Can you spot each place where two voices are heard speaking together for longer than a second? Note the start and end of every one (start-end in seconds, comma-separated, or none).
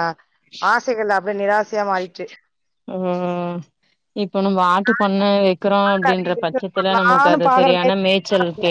6.1-8.0